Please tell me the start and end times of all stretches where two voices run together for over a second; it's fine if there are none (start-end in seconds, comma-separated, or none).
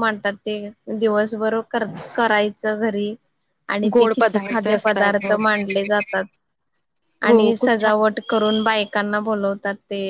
3.9-5.4